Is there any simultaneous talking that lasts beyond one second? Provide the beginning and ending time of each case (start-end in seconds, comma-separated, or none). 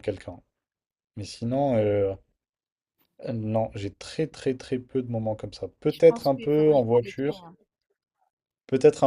5.9-7.4